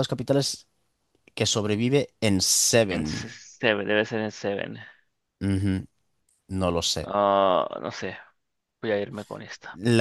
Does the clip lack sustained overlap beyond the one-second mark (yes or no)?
yes